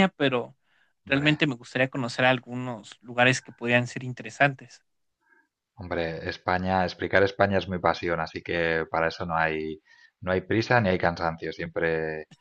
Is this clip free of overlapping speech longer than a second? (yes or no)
yes